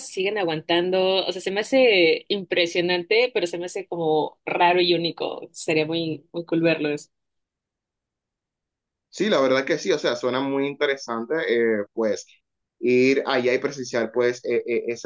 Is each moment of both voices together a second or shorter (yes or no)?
yes